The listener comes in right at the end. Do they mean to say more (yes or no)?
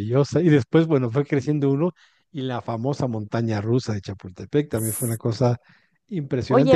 no